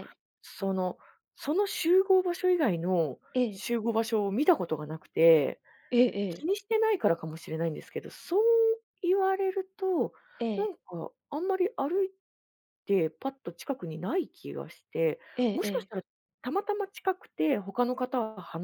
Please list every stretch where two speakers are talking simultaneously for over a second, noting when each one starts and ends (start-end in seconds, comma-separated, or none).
none